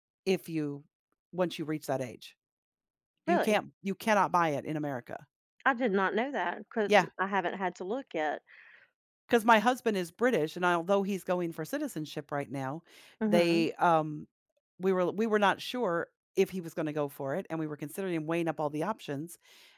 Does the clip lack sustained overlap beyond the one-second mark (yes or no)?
yes